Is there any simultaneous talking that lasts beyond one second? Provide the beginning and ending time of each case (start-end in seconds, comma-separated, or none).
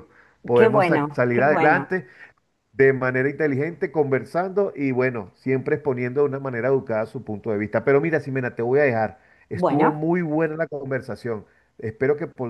0.5-1.9